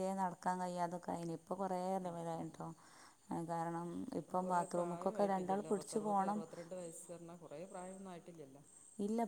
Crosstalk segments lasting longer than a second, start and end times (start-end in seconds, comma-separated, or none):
4.3-6.5